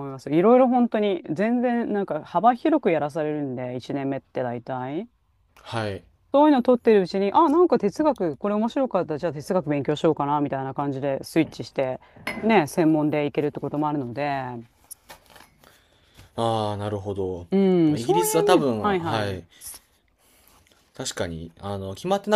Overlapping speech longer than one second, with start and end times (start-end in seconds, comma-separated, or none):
17.9-19.4